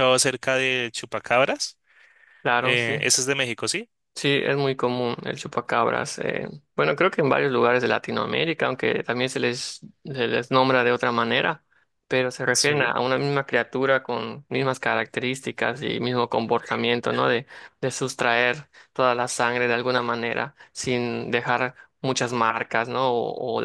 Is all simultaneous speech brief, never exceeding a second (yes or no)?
yes